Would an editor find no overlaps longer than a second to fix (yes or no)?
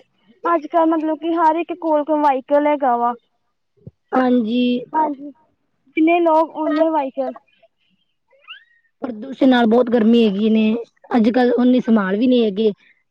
yes